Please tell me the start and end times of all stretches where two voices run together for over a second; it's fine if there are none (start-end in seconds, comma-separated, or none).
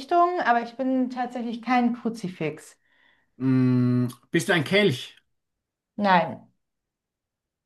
none